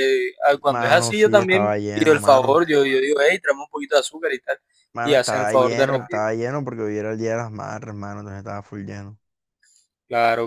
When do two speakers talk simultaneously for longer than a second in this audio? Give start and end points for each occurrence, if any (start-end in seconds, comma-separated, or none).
0.7-2.6, 5.0-6.2